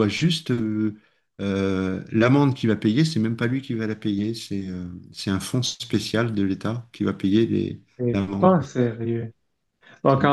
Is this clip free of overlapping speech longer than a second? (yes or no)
yes